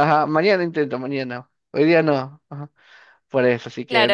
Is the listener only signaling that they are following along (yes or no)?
no